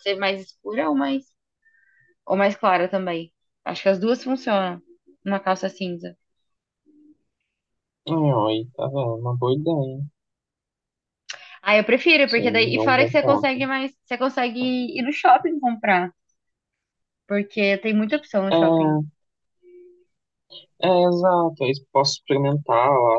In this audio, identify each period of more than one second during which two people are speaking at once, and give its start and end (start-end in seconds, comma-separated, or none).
12.2-13.6